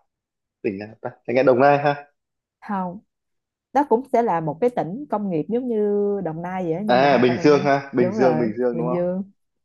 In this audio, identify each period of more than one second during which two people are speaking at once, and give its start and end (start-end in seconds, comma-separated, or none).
6.9-8.9